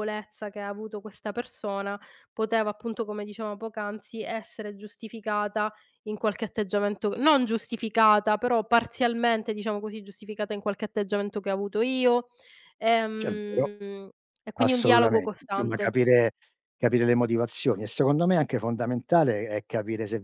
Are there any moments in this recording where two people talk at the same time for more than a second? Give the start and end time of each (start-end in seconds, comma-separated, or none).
14.6-16.0